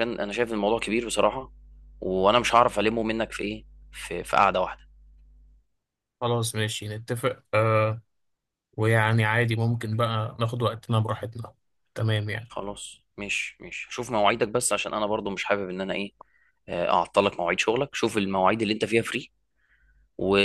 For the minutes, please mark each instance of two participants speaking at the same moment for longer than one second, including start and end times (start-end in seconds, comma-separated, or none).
none